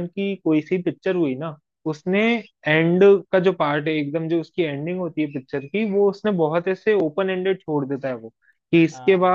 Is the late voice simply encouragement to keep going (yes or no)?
yes